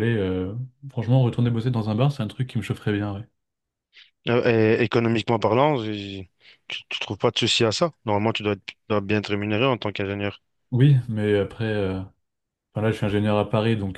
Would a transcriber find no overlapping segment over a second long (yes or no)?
yes